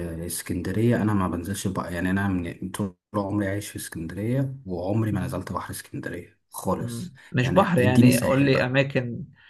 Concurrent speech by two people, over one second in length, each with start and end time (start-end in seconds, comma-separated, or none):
6.8-8.7